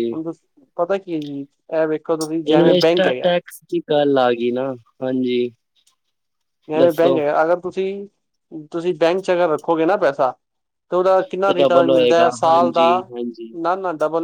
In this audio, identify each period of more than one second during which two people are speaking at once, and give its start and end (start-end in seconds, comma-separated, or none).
11.4-13.1